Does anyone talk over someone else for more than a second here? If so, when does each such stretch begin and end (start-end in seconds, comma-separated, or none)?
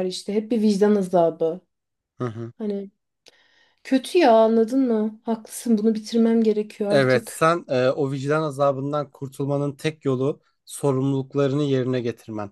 none